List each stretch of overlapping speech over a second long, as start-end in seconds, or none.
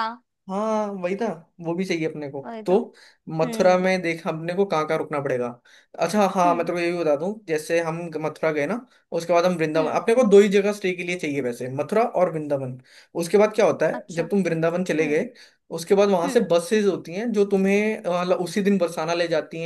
none